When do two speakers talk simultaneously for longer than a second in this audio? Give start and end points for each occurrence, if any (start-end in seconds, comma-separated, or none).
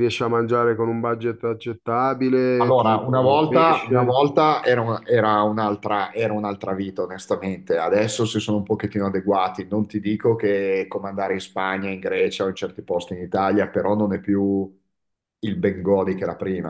2.6-4.2